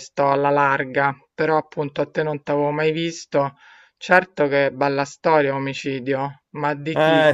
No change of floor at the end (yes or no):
no